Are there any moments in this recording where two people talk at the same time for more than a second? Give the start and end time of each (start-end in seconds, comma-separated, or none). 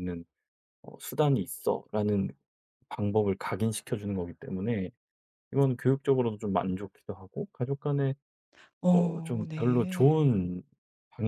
8.9-10.3